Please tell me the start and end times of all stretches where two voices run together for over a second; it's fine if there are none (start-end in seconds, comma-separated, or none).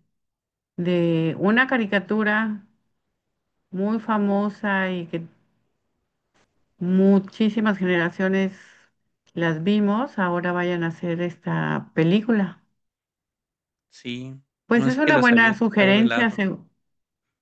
14.7-16.4